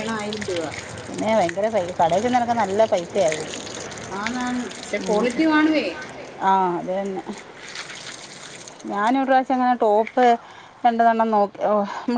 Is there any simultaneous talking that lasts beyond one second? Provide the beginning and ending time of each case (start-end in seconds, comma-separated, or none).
none